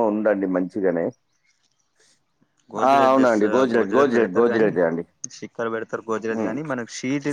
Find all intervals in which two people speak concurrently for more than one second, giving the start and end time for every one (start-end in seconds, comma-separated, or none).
2.9-4.7